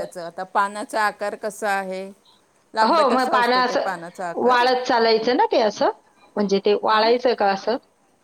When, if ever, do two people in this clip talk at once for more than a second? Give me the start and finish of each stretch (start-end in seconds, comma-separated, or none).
2.7-4.6